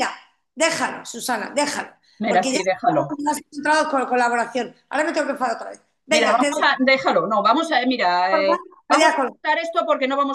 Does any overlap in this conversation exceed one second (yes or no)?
no